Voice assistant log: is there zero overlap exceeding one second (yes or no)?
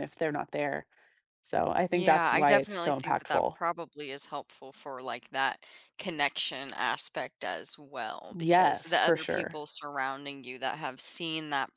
no